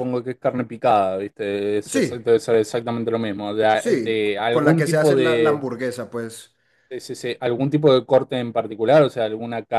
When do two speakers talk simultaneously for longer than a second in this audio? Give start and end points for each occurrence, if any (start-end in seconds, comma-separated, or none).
3.7-5.7